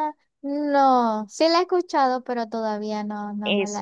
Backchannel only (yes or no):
no